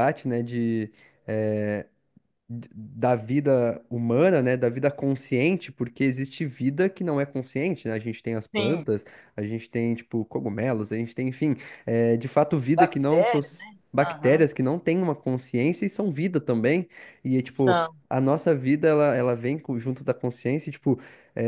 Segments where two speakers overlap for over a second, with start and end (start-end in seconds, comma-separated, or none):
12.7-14.5